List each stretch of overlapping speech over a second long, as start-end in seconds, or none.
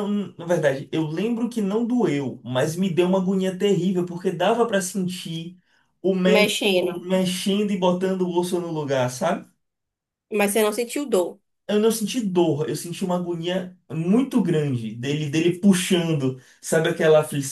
none